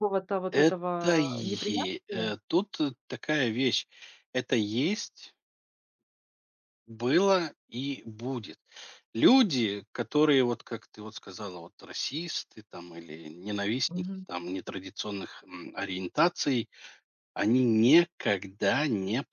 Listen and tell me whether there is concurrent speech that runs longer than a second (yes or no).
yes